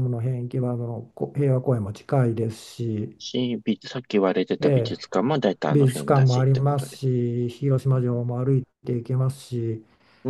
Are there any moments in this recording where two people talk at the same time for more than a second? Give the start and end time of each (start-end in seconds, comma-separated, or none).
5.7-7.0